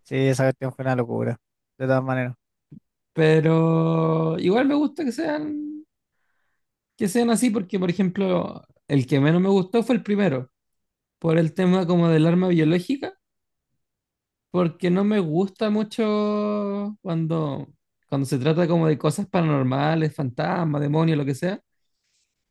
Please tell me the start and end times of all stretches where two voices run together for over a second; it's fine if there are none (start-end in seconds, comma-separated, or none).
none